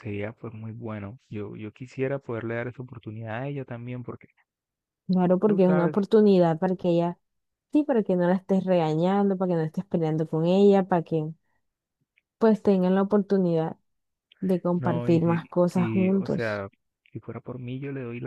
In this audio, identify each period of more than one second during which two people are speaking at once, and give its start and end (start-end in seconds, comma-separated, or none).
14.8-16.6